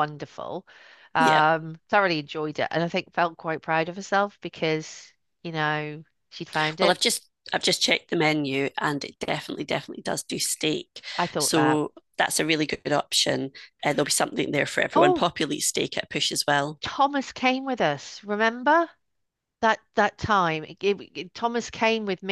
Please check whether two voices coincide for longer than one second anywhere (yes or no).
no